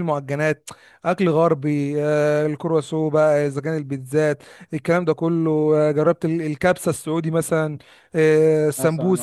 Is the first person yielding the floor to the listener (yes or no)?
no